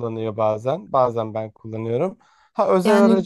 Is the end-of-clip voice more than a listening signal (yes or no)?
yes